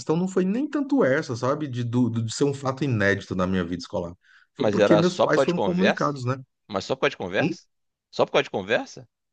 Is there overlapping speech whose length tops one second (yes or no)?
yes